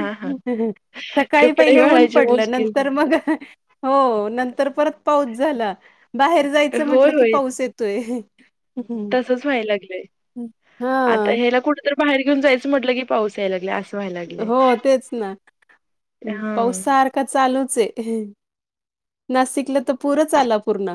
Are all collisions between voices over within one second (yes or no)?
no